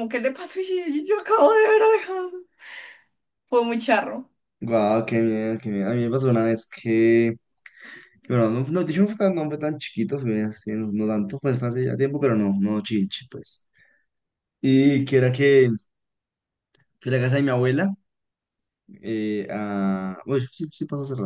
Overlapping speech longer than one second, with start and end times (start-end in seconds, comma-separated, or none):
none